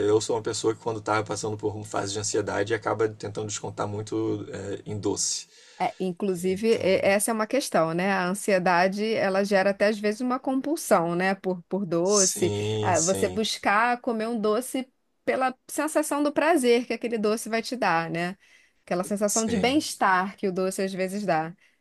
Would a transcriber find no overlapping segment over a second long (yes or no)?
no